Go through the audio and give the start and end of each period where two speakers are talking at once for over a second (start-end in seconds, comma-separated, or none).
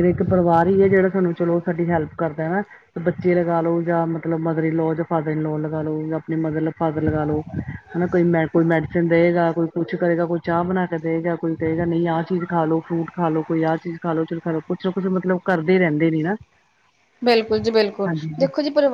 none